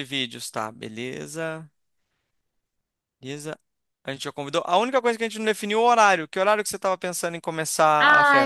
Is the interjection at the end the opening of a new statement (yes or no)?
yes